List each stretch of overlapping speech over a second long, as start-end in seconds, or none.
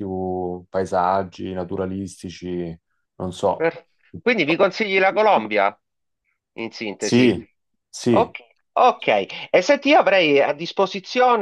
none